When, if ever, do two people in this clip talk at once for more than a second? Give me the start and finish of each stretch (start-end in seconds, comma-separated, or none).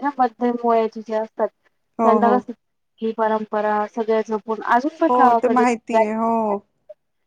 none